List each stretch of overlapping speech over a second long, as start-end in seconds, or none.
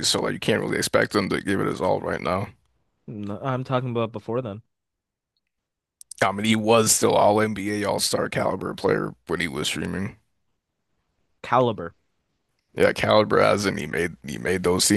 none